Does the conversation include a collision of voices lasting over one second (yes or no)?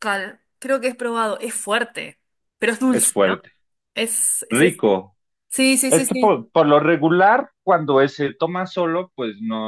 no